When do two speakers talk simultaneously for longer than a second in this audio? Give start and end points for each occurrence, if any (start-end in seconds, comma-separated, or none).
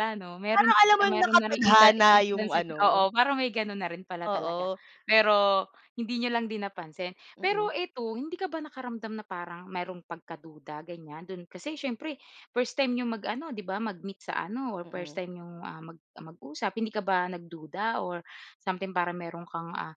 0.6-2.8